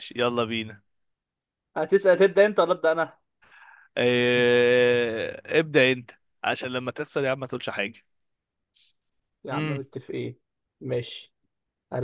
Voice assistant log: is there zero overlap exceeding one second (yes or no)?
yes